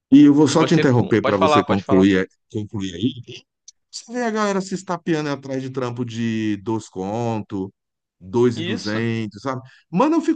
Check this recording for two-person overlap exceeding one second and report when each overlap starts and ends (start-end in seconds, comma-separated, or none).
0.6-2.1